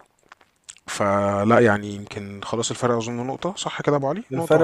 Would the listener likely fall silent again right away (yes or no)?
no